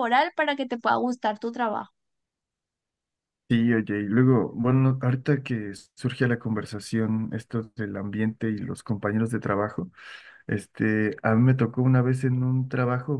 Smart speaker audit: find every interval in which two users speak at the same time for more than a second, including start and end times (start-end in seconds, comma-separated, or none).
none